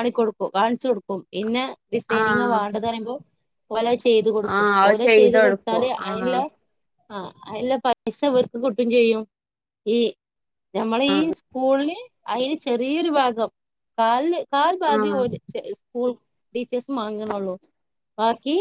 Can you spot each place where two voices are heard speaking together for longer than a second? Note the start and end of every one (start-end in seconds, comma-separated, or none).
4.5-6.3